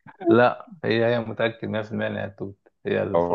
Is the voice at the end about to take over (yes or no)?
yes